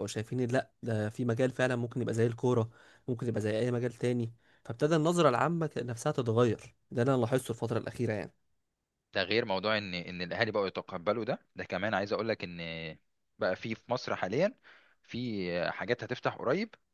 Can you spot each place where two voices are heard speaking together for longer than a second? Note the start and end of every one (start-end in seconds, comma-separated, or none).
none